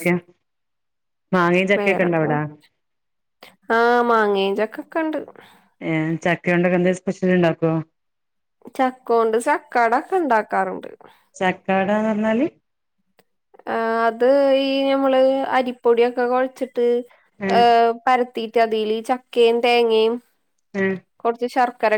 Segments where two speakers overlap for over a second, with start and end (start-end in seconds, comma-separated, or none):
none